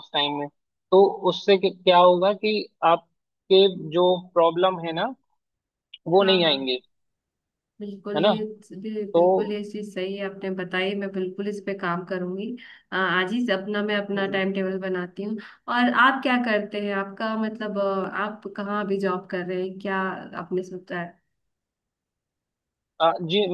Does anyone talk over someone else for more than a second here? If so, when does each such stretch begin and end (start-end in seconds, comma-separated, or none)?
none